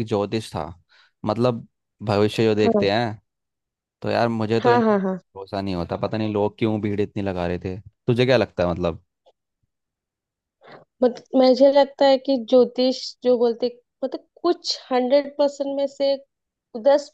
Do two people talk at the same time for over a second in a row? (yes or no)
no